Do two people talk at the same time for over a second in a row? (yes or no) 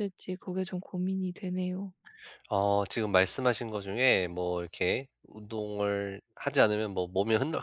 no